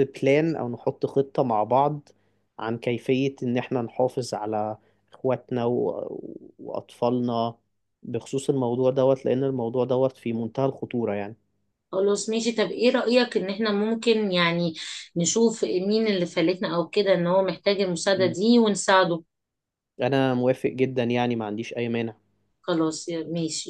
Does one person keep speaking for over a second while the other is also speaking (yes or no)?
no